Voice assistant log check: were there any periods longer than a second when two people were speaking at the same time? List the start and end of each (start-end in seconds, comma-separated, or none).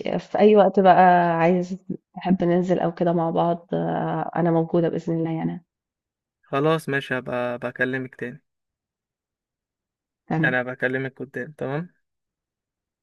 none